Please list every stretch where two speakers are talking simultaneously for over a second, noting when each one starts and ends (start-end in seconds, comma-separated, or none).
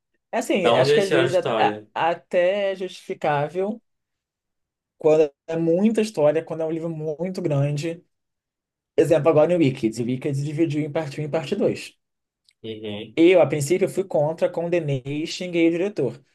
0.6-1.9